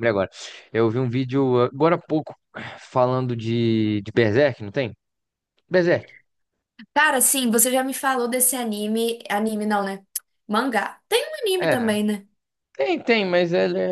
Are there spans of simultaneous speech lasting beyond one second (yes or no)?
no